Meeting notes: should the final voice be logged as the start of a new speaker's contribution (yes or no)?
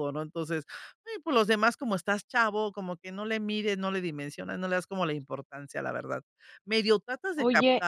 yes